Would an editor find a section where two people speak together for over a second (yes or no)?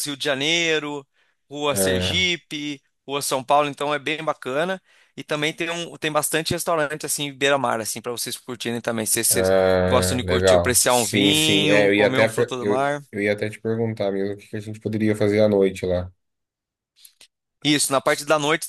yes